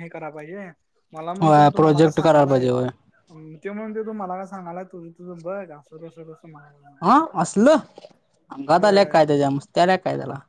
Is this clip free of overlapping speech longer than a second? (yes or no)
no